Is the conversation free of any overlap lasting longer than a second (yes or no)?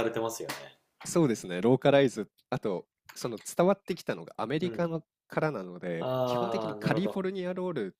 no